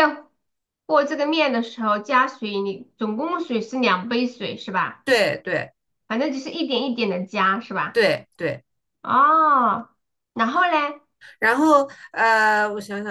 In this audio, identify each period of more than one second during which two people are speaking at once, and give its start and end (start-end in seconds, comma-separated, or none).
none